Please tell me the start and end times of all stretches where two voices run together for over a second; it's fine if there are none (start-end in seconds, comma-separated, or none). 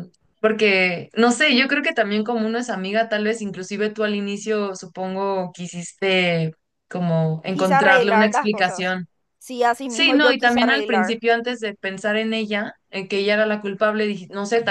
7.5-8.9, 9.9-11.2